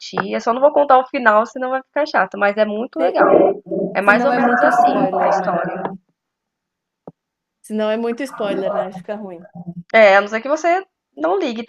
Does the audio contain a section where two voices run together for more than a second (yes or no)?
yes